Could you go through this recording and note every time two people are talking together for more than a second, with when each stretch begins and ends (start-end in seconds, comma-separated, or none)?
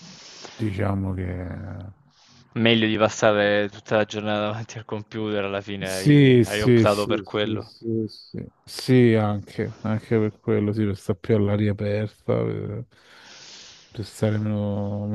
5.8-7.7